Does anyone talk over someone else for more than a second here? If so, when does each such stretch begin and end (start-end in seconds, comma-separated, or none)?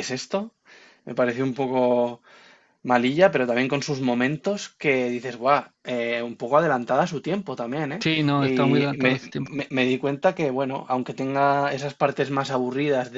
8.0-9.5